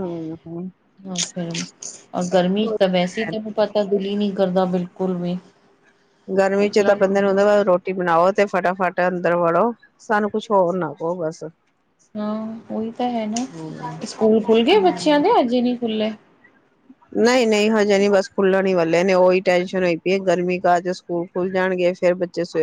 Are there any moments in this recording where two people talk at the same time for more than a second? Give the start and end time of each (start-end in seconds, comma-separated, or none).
none